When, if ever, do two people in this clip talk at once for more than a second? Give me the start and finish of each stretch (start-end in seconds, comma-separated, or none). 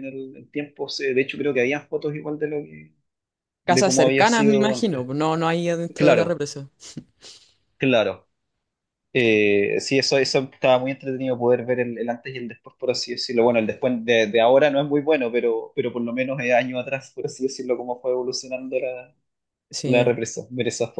3.7-5.1